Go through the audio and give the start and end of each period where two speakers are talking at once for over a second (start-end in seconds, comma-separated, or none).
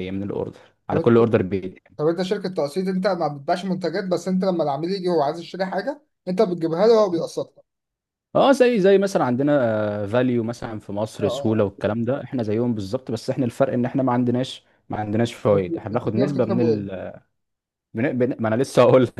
15.5-16.9